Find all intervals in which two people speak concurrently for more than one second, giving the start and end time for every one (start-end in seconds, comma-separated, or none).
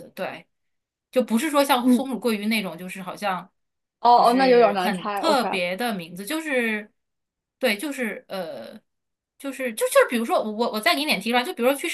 4.1-5.5